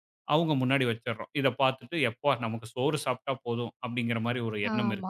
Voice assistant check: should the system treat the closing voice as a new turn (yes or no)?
yes